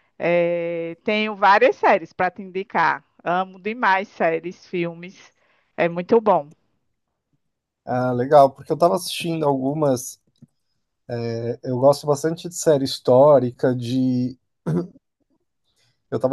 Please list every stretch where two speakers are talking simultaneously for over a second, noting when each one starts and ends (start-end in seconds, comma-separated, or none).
none